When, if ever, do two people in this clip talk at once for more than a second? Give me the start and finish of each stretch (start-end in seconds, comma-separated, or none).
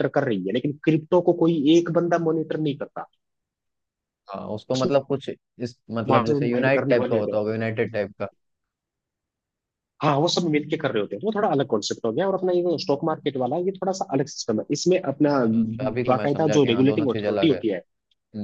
6.1-7.4, 16.1-17.6